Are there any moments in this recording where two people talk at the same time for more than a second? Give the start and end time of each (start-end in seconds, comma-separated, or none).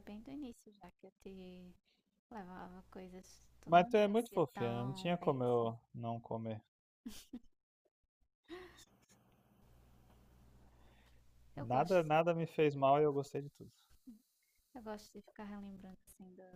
3.6-5.7